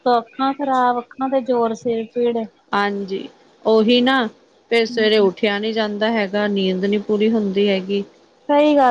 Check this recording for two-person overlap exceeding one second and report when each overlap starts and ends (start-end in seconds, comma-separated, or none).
none